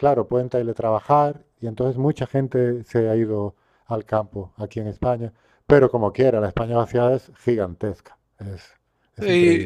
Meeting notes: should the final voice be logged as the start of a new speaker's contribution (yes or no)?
yes